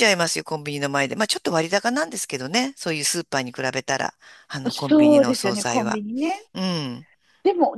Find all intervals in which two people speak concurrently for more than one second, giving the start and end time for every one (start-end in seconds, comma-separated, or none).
4.7-6.0